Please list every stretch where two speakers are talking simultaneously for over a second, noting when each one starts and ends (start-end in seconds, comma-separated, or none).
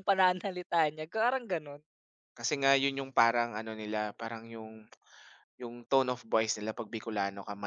none